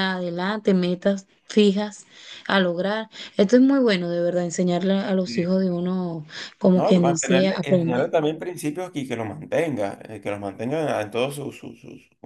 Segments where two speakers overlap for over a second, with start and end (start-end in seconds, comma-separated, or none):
6.7-8.1